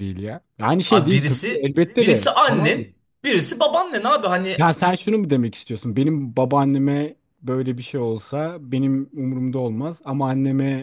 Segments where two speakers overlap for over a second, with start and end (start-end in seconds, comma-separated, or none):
0.9-2.8